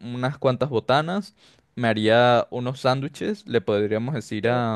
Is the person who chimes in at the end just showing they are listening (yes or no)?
yes